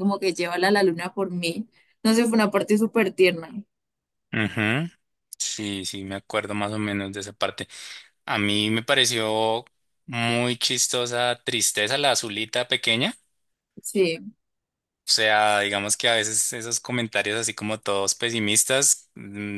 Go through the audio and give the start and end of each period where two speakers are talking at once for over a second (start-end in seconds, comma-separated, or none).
none